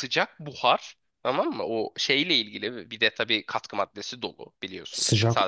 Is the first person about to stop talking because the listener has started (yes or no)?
yes